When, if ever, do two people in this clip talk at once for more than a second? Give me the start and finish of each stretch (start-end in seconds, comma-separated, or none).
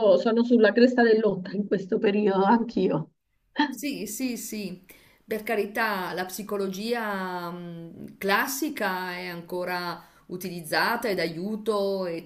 none